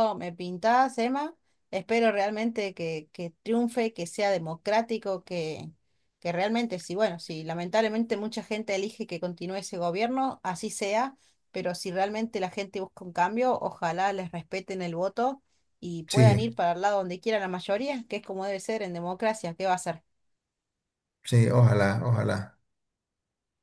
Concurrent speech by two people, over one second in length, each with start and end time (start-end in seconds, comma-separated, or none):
none